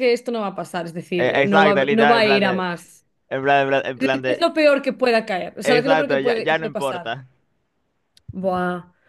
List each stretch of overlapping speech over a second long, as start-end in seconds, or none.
1.2-2.6, 5.6-7.2